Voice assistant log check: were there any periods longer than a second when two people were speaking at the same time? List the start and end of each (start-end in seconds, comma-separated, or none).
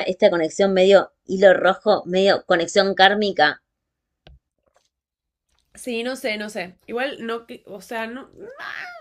none